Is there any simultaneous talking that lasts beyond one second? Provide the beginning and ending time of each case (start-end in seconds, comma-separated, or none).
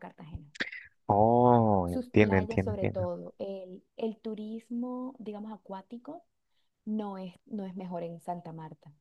1.8-3.1